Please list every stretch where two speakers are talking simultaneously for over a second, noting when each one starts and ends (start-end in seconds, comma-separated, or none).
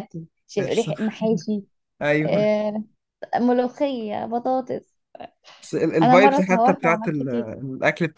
6.0-7.5